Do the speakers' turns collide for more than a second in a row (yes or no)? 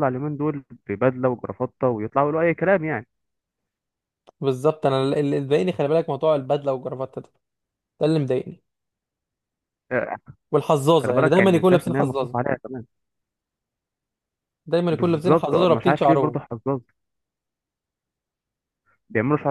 yes